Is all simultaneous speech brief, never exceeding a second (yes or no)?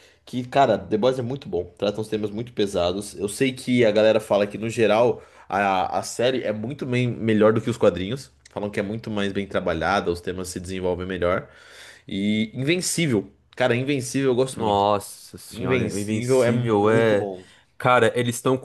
no